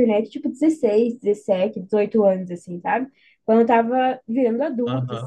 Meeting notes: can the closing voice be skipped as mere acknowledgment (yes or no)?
yes